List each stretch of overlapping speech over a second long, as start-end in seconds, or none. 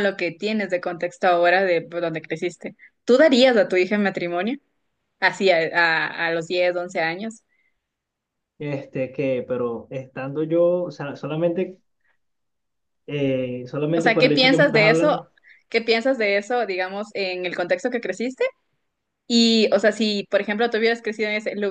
13.9-15.2